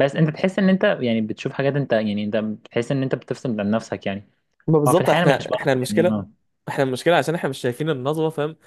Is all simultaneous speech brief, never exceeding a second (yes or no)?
no